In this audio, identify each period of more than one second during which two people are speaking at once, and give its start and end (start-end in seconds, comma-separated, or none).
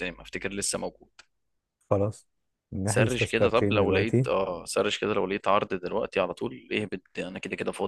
2.8-4.3